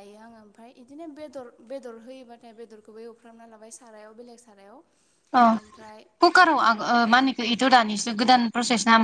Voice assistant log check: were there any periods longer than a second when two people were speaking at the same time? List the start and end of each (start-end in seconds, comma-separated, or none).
none